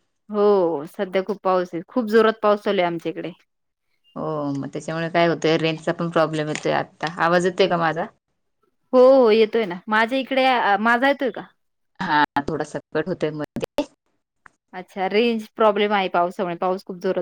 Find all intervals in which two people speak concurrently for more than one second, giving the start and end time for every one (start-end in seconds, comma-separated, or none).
none